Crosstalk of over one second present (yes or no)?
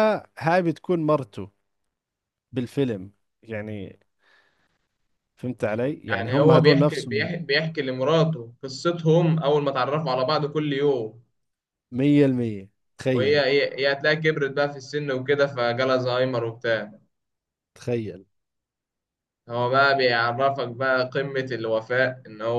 yes